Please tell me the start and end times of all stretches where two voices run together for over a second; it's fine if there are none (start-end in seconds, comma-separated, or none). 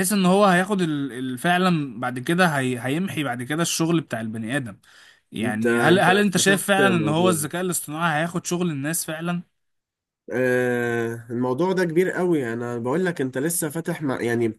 5.4-7.4